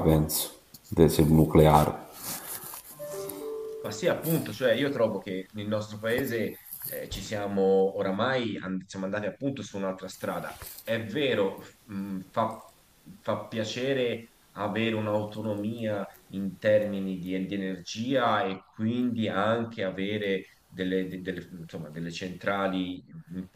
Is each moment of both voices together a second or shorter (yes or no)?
yes